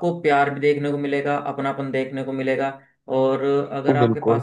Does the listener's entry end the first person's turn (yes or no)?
no